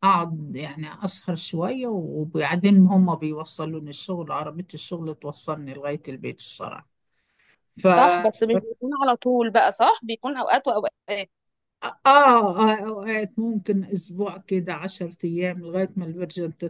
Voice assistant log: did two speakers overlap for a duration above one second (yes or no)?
no